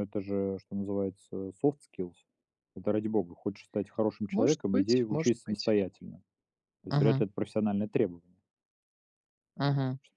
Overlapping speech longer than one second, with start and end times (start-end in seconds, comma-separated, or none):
4.3-5.7